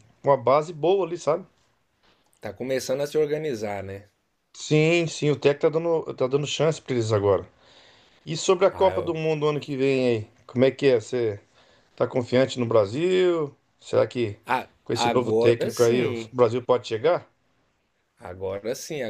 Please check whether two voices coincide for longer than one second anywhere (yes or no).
yes